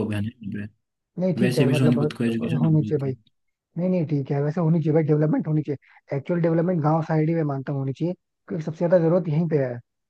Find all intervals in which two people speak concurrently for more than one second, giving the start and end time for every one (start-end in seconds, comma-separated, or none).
1.2-3.1